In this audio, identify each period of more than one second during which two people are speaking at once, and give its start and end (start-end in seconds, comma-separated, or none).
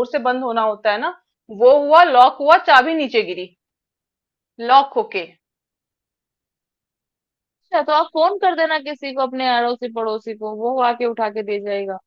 none